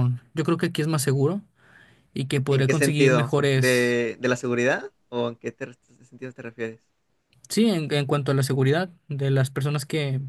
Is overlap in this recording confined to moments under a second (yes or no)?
no